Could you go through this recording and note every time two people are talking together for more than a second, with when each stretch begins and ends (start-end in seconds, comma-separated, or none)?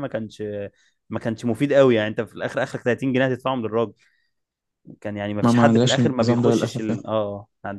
5.4-7.0